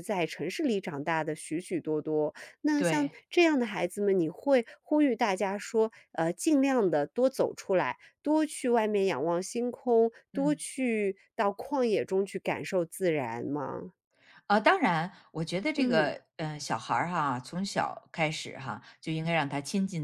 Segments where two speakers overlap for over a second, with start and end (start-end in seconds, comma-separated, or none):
none